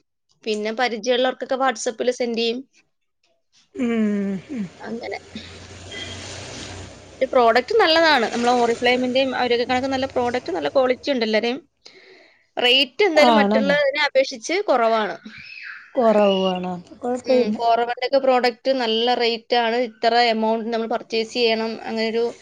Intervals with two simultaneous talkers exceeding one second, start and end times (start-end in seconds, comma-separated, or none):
none